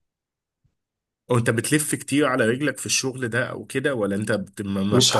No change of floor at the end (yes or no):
no